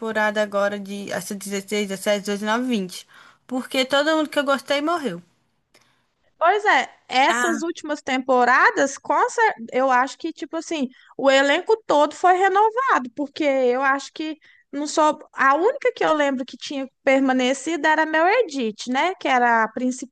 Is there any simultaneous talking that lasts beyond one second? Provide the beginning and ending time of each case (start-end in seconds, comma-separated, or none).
none